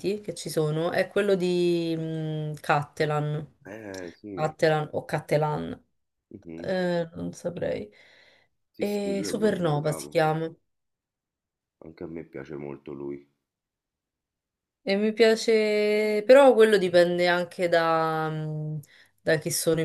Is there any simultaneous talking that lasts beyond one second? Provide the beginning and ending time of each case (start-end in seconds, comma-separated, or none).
8.8-10.2